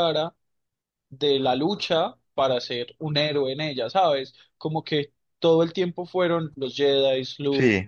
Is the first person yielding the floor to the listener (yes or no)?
no